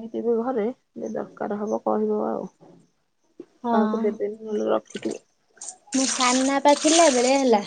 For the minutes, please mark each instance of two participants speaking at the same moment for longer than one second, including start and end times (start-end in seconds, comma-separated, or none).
none